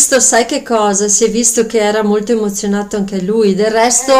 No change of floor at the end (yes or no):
yes